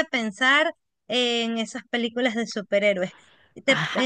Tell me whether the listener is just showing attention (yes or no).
yes